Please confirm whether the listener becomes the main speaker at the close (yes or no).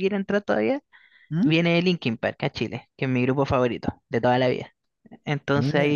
no